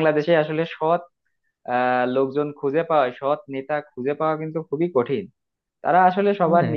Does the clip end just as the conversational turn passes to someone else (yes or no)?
no